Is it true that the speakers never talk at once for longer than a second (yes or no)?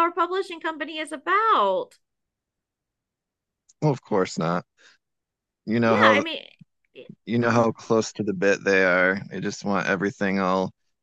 yes